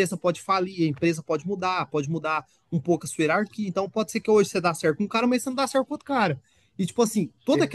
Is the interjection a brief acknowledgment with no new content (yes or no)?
yes